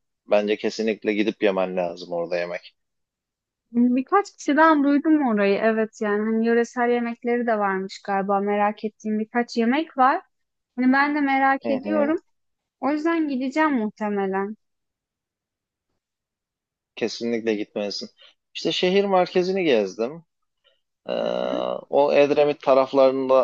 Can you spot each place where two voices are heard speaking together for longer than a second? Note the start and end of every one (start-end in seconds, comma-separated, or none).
none